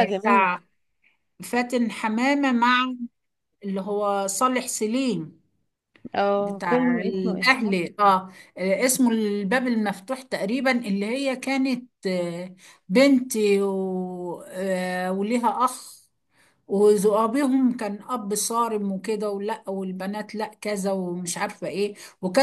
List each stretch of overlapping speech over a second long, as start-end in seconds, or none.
6.3-7.6